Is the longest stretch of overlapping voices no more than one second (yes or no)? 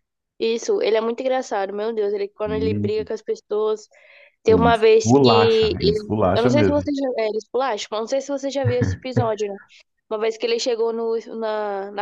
no